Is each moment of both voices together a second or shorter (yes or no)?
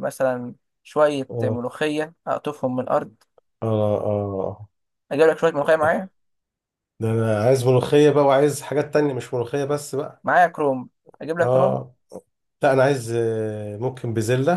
yes